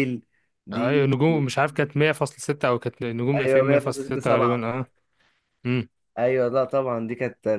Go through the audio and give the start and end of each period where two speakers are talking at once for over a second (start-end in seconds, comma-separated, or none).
3.4-4.7